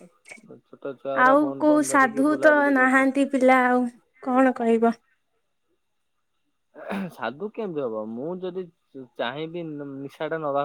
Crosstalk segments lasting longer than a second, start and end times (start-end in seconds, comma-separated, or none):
1.3-3.1